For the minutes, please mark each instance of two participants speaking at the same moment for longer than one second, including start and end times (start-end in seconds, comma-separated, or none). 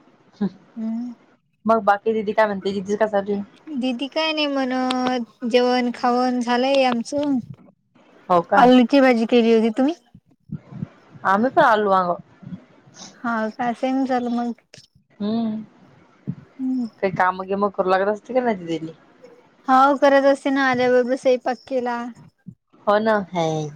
none